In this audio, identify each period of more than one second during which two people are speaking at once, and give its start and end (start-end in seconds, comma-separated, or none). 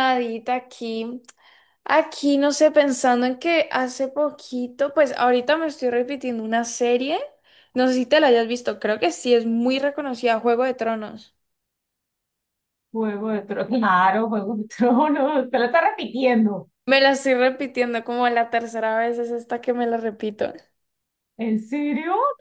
none